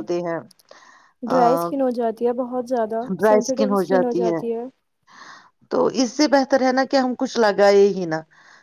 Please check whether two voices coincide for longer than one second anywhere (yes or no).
no